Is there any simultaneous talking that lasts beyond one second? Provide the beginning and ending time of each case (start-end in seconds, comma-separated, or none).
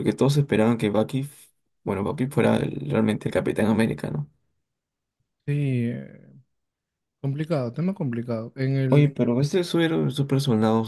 none